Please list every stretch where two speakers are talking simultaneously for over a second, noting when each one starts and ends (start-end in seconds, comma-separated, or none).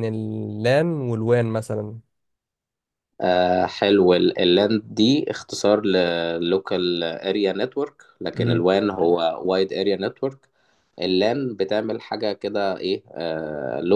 none